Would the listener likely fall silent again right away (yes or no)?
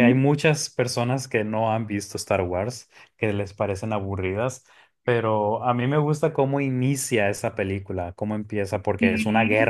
yes